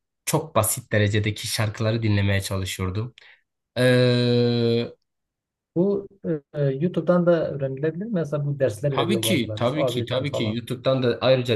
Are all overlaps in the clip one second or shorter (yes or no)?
no